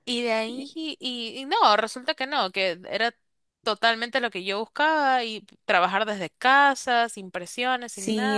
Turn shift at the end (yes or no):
yes